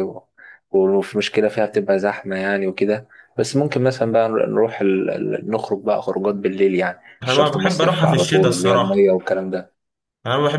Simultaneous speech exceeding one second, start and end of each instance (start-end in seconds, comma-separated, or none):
7.2-9.1